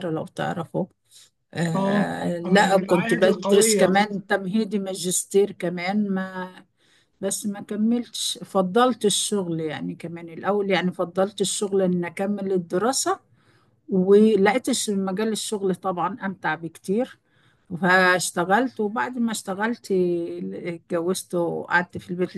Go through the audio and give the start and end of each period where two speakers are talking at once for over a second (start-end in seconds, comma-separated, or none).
1.7-3.8